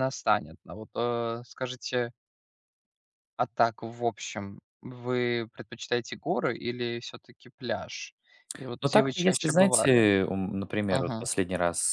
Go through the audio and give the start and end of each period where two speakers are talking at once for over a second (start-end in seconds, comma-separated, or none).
8.8-10.0